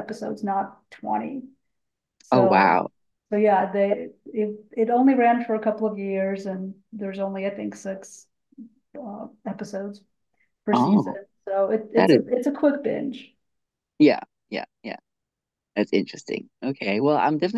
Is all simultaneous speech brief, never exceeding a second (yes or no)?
yes